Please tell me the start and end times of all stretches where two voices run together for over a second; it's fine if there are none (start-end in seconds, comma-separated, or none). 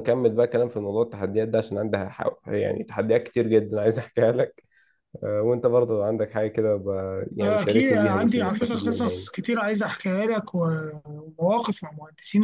7.4-9.3